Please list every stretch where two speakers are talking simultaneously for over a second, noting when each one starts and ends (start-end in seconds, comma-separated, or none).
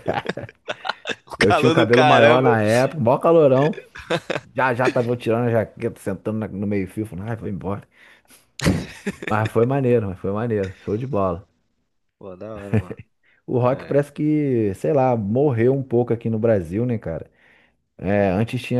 1.4-2.6